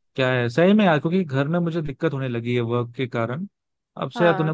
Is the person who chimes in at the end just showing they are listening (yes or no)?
yes